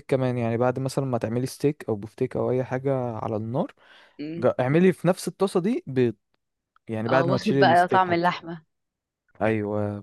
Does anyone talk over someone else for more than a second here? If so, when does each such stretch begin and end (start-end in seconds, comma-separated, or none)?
7.1-8.3